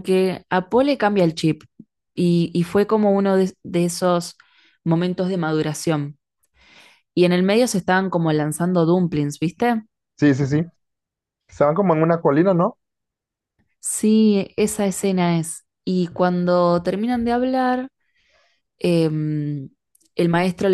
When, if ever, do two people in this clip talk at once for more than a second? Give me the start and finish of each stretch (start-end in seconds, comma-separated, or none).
none